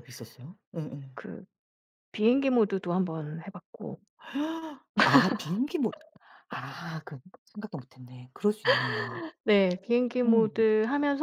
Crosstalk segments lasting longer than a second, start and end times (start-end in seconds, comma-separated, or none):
none